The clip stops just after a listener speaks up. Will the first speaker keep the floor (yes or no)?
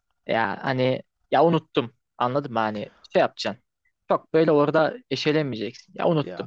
yes